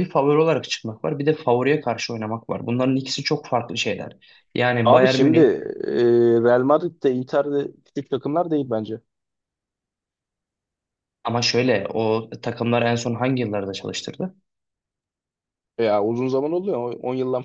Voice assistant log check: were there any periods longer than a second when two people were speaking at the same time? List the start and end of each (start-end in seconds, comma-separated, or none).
none